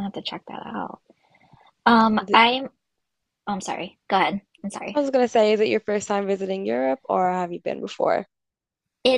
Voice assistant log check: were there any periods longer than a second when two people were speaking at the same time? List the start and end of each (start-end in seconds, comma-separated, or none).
none